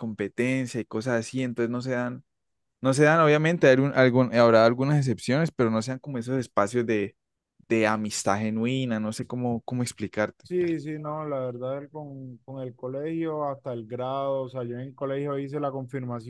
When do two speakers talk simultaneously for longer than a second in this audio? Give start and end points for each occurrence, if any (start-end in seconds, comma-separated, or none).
none